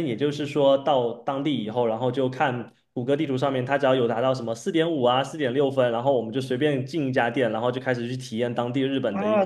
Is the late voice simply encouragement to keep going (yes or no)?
no